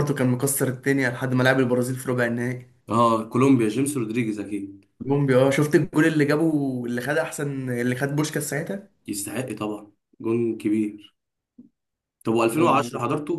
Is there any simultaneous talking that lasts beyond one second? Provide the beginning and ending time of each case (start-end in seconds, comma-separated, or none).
none